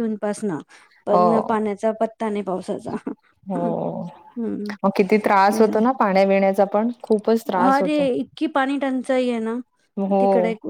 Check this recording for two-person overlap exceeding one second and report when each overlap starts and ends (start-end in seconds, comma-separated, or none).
none